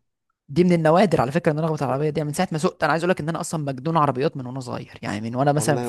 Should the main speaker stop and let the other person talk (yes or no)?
no